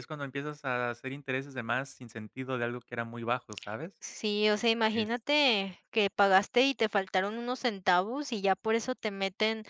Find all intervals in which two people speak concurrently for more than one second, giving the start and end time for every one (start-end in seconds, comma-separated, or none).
none